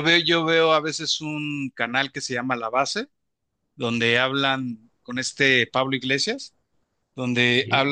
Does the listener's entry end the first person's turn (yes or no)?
no